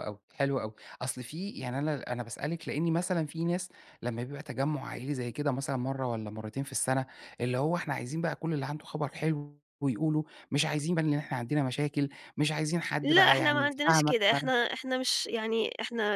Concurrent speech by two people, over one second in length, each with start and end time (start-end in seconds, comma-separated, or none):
13.0-14.5